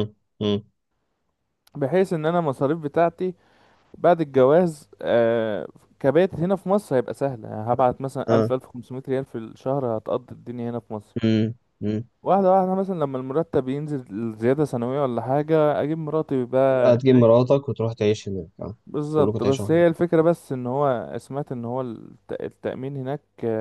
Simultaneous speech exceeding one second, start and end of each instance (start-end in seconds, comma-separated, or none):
none